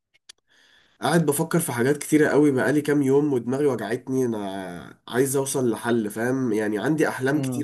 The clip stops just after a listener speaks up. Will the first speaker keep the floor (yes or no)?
yes